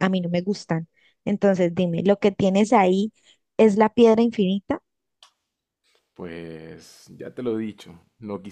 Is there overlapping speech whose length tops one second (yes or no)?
no